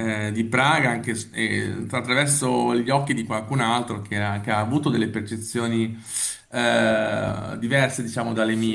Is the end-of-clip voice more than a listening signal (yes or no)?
no